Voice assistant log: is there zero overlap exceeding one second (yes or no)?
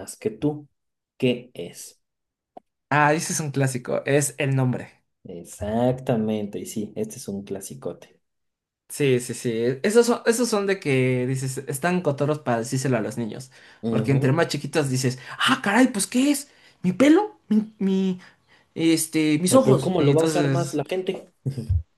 no